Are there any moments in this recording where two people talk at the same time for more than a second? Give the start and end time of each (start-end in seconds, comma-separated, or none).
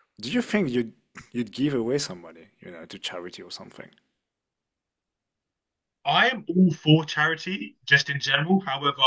none